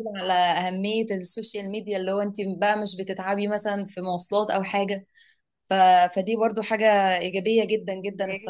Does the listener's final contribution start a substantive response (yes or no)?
yes